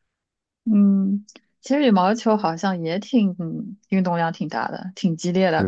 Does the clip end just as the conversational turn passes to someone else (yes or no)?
yes